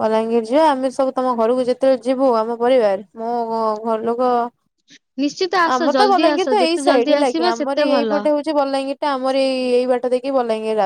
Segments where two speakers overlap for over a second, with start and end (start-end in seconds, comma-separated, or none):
5.8-8.1